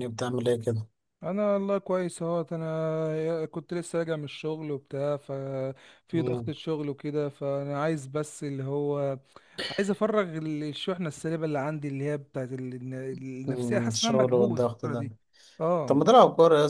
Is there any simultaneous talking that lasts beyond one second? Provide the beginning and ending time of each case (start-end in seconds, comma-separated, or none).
13.5-15.1